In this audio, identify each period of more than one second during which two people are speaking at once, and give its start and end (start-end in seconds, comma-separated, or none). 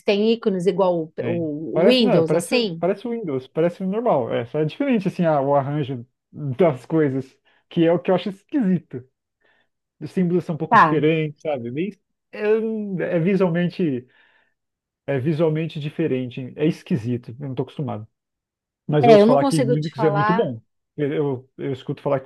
1.2-2.8, 19.0-20.5